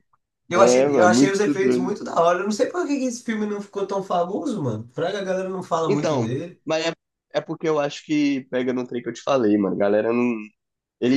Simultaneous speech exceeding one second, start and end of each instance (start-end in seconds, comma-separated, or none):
0.5-2.0